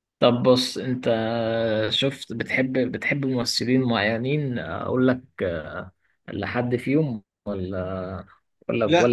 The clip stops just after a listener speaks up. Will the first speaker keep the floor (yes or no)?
no